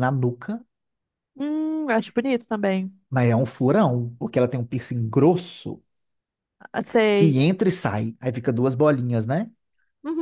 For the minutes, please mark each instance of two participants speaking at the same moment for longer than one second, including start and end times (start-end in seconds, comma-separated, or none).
none